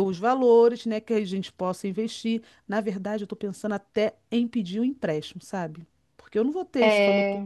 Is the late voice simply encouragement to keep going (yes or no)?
yes